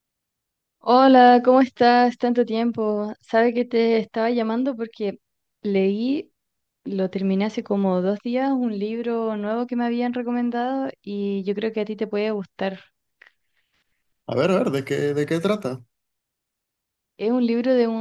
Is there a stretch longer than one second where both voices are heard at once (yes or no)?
no